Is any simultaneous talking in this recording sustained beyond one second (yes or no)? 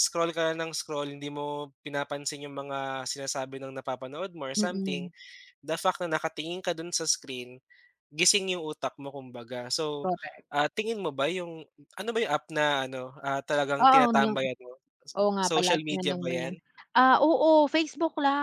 yes